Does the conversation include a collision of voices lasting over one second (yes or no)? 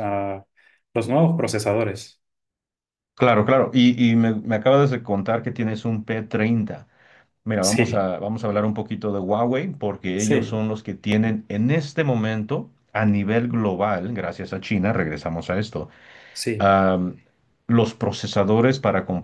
no